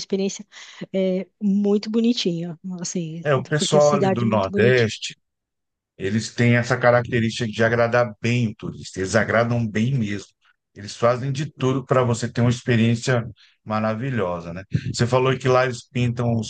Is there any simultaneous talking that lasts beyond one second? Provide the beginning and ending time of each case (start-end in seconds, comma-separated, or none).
3.2-4.9